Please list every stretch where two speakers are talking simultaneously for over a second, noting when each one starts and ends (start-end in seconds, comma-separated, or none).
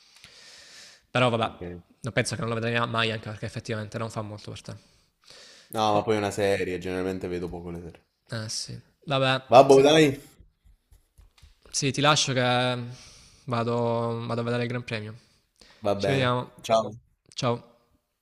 none